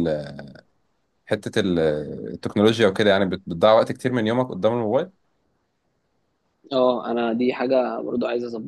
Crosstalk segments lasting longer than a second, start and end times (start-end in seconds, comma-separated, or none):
none